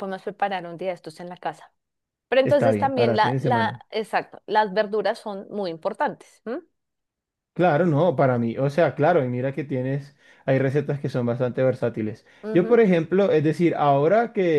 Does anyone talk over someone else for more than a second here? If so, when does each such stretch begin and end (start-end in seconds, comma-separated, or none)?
2.4-3.8